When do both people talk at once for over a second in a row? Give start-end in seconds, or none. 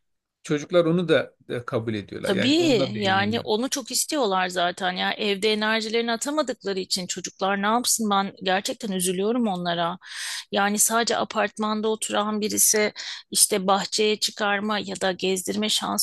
2.2-3.5